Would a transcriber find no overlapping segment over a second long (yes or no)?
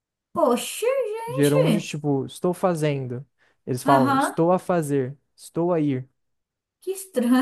yes